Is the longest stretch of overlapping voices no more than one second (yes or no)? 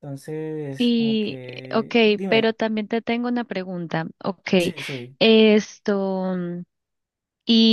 no